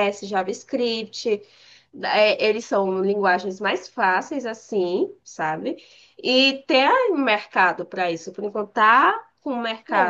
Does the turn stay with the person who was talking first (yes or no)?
no